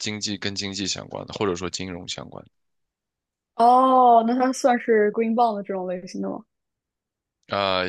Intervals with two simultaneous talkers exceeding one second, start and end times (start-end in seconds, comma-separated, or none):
none